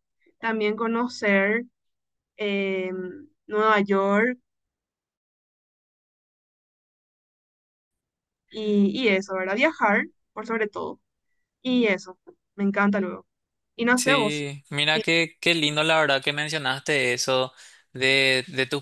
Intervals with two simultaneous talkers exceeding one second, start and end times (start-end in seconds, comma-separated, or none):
none